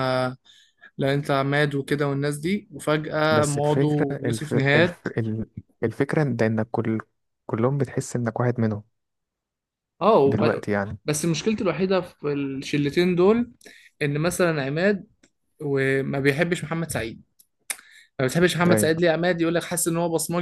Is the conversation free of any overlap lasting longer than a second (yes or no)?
no